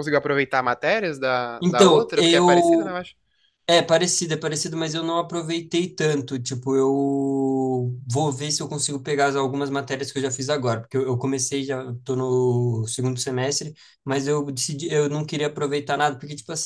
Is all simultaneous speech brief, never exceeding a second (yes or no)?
no